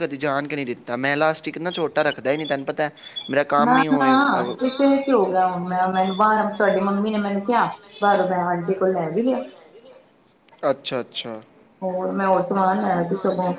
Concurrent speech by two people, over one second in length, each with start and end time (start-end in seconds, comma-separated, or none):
none